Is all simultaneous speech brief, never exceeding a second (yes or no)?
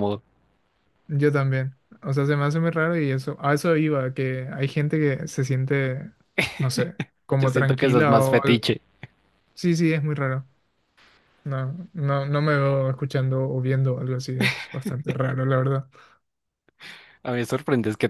no